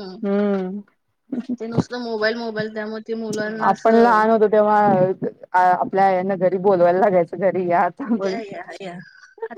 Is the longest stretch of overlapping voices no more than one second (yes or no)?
yes